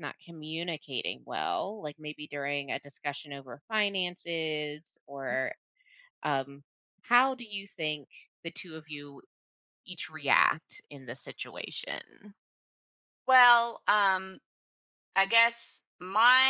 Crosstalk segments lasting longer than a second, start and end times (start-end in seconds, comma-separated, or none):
none